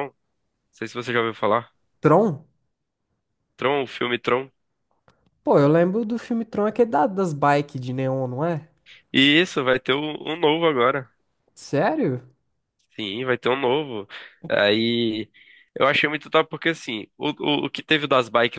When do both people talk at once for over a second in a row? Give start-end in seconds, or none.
none